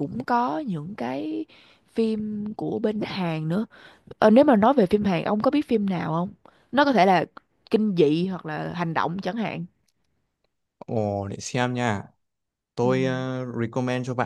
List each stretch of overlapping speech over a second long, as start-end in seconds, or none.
none